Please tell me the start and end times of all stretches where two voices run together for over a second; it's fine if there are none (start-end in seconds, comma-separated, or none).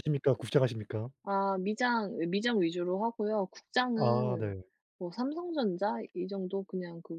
none